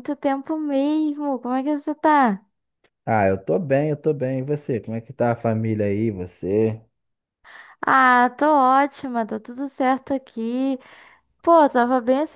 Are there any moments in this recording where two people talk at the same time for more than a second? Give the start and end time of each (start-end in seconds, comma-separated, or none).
none